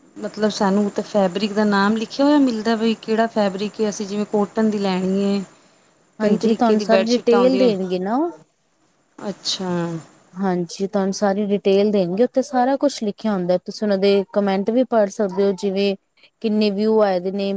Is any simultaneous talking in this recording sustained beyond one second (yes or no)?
yes